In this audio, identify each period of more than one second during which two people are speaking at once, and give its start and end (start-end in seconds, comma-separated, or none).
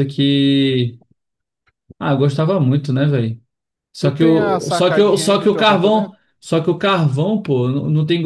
4.0-6.2